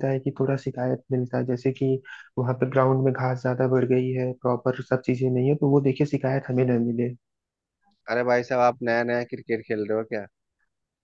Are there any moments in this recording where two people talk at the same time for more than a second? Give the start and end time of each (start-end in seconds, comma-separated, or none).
none